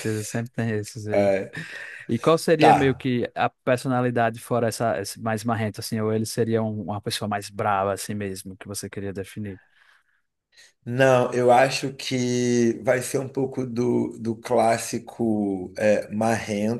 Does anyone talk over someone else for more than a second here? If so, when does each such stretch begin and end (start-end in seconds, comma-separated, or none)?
none